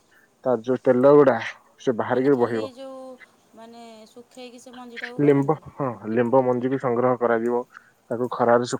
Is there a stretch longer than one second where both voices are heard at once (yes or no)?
no